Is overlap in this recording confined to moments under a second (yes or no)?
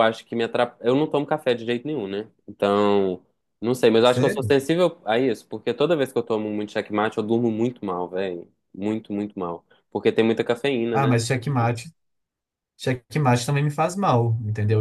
yes